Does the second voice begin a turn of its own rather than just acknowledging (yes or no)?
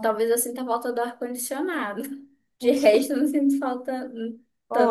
yes